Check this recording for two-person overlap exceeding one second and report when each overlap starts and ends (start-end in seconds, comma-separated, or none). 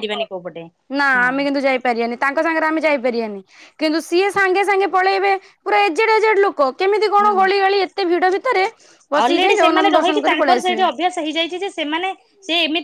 9.2-10.9